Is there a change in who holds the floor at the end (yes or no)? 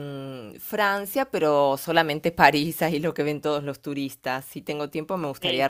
no